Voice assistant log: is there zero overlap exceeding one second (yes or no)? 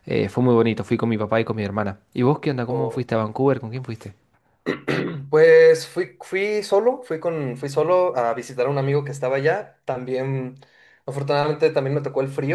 yes